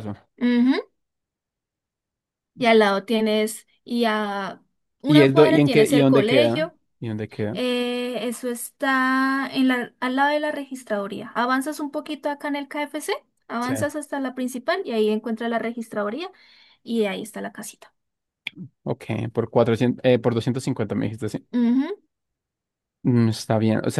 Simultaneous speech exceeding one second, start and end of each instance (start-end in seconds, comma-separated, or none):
5.1-6.7